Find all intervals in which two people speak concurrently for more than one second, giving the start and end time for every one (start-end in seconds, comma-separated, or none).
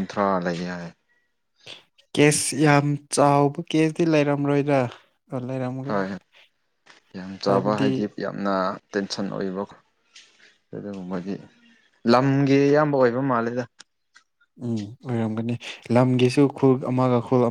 none